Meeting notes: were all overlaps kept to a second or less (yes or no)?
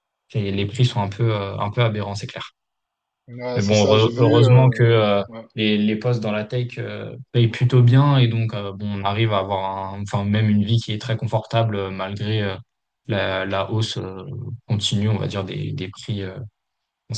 no